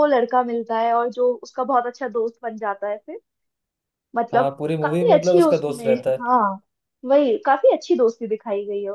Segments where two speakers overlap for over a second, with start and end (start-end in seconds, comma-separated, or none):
4.3-6.2